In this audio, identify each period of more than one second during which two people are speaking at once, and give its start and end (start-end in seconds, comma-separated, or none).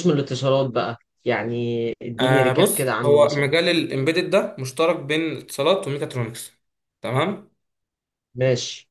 2.2-3.5